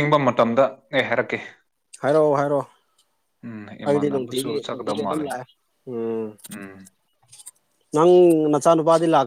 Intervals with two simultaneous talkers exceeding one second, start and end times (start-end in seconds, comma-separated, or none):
3.9-5.2